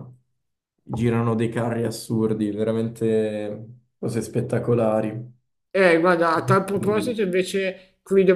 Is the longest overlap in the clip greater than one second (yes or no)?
no